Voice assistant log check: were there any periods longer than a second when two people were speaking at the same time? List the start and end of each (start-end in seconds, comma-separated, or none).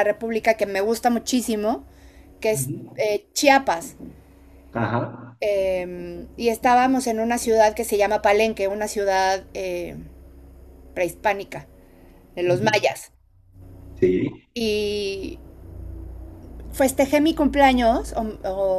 none